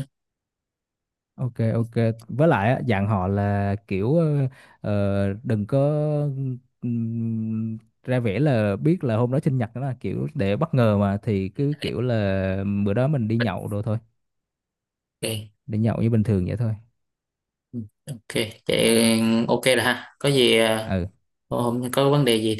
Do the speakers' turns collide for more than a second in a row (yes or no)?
no